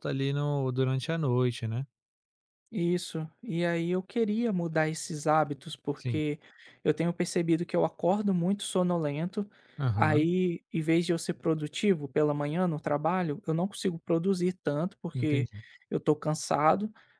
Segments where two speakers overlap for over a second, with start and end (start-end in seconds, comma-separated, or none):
none